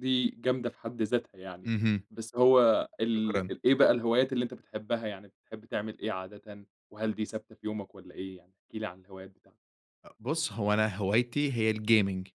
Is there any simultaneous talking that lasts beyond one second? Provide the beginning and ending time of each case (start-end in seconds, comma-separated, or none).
none